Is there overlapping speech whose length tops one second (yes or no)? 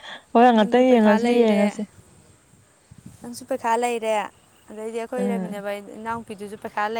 yes